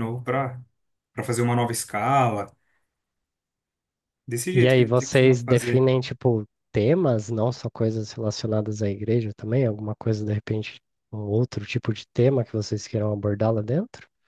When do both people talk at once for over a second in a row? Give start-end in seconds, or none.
4.5-5.8